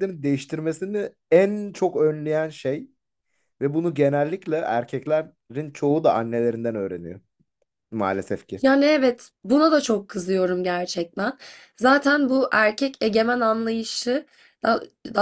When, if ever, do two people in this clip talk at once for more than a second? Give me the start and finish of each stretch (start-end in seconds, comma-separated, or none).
none